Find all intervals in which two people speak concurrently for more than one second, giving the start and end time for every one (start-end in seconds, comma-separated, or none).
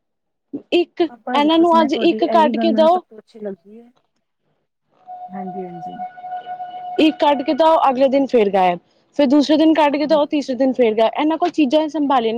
1.3-3.0